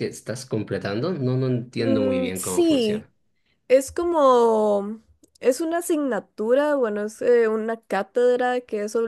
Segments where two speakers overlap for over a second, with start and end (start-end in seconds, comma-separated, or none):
1.8-3.1